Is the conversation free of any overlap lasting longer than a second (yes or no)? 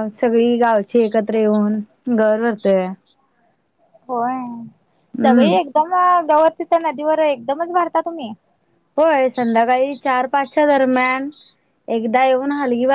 yes